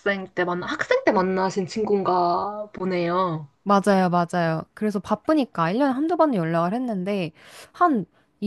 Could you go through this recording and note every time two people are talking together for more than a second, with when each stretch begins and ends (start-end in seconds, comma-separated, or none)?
none